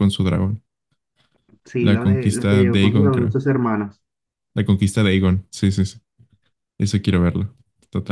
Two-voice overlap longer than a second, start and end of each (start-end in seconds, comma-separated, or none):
1.8-3.4